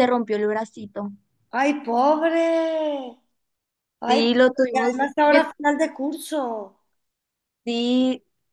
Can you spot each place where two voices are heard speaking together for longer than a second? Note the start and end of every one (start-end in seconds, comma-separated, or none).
4.0-5.4